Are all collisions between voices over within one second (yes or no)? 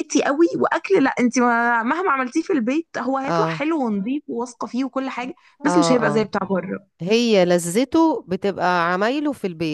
yes